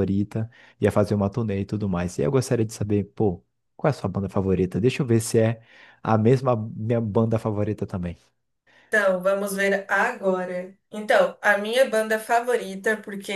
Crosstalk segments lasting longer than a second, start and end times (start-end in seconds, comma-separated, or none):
none